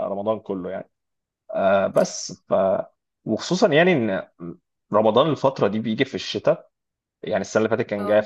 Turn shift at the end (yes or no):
no